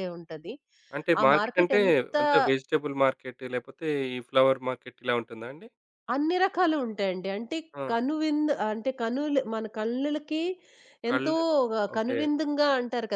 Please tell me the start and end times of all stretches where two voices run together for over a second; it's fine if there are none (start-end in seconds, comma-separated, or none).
none